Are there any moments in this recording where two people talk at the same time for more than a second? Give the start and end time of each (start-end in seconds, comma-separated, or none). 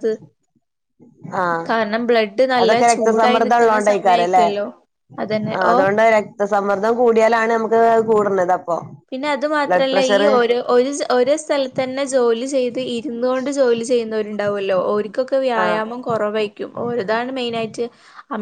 2.6-4.5